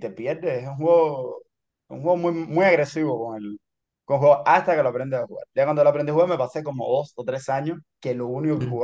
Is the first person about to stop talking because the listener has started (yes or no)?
no